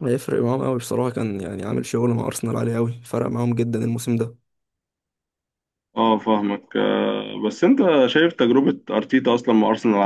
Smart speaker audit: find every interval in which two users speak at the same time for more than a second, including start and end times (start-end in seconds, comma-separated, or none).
none